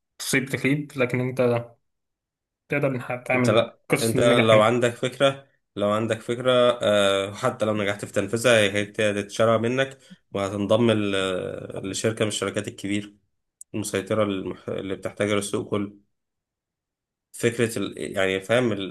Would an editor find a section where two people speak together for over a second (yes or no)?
yes